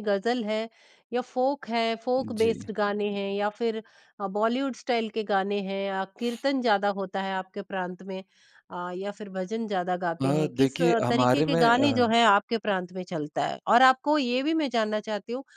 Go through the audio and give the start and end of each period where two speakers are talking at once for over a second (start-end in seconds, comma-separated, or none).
10.2-11.9